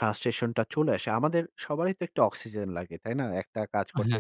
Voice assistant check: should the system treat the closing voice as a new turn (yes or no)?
no